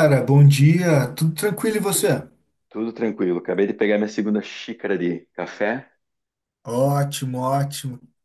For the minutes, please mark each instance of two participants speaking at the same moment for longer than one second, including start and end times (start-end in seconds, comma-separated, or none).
none